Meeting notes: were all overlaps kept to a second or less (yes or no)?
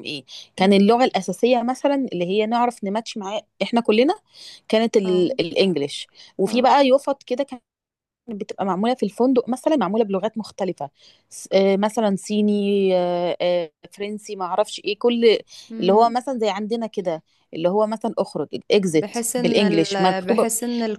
no